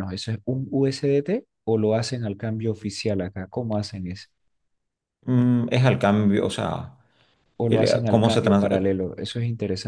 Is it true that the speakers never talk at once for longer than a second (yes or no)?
no